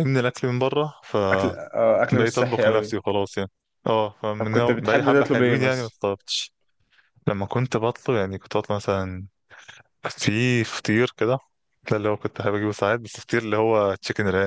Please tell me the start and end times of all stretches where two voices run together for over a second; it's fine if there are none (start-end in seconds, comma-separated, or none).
1.3-3.0, 4.4-6.0